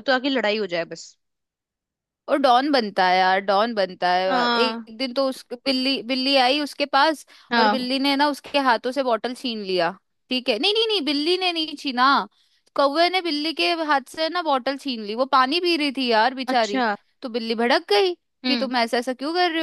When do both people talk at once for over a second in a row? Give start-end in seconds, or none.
none